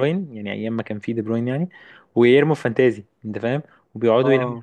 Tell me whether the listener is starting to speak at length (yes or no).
yes